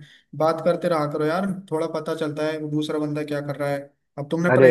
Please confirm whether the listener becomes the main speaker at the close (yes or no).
no